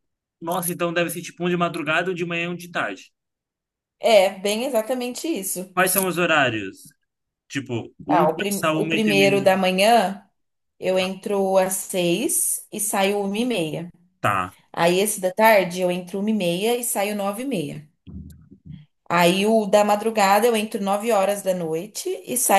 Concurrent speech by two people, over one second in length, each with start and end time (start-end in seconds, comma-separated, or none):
8.1-9.6